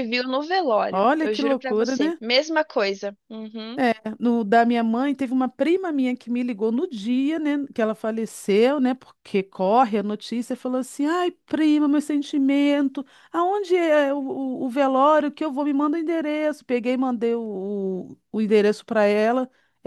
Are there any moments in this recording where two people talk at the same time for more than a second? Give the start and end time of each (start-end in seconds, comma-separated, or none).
0.9-2.2